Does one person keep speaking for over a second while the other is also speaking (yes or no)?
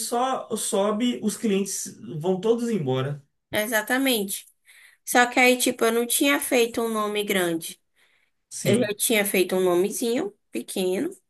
no